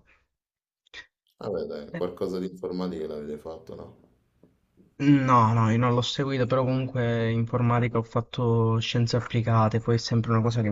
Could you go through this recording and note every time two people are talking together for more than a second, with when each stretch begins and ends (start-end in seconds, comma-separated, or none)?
none